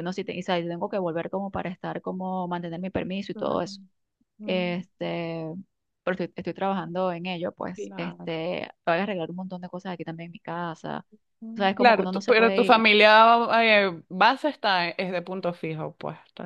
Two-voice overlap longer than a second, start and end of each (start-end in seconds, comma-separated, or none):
11.6-12.8